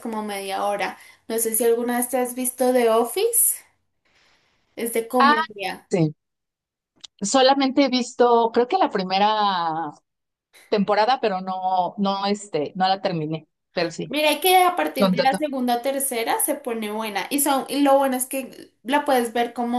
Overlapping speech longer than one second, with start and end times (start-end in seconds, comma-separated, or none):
none